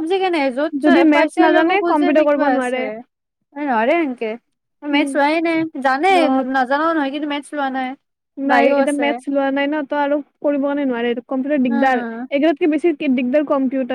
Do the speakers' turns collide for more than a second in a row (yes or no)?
yes